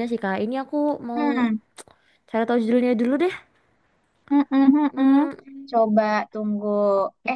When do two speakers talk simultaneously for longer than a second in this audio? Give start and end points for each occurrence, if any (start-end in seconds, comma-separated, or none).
none